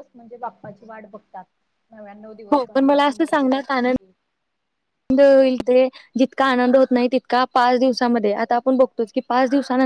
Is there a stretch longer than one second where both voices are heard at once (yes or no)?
yes